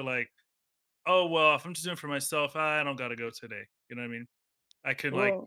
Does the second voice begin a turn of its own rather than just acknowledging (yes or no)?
no